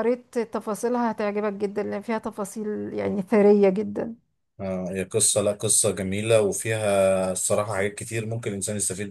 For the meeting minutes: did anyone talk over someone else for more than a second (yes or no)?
no